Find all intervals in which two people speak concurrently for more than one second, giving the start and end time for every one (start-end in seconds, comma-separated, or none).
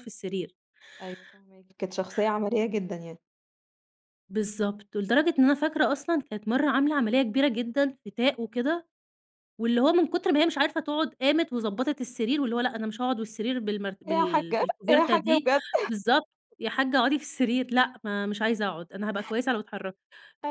14.1-15.5